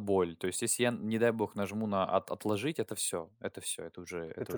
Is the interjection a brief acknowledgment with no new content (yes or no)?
no